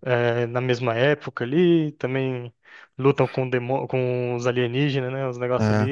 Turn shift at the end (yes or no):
no